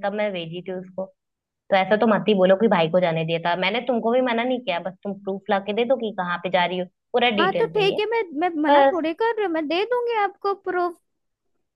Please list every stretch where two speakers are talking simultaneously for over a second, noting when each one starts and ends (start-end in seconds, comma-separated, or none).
none